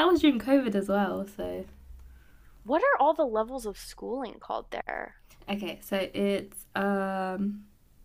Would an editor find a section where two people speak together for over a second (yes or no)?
no